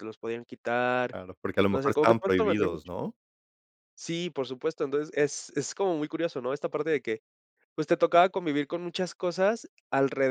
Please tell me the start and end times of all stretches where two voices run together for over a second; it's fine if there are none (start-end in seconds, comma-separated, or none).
1.7-3.0